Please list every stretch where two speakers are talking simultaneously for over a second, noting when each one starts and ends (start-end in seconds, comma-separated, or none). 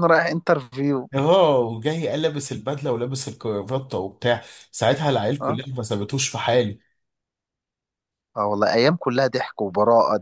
none